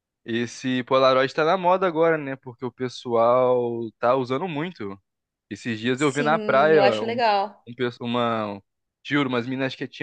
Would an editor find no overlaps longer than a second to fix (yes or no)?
no